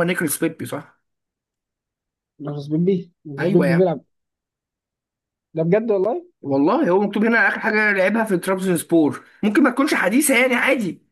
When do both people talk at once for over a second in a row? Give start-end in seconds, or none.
none